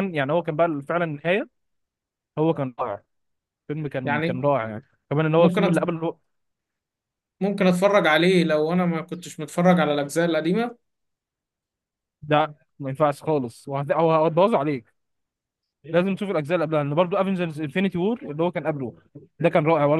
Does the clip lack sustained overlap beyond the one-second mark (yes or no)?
yes